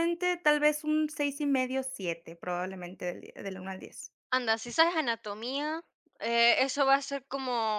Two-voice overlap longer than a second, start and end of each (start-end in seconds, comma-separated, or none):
none